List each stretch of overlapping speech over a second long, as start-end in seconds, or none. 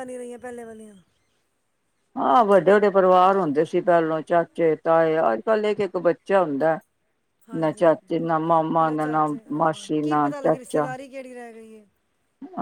8.9-10.9